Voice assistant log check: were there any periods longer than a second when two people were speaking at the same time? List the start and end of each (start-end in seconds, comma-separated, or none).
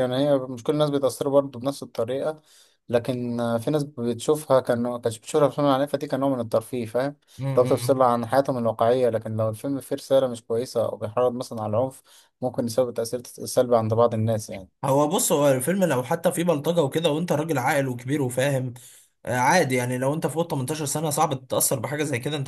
none